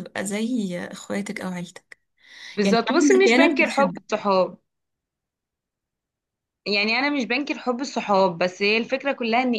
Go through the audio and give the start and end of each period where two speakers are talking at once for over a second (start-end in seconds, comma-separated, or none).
2.6-4.0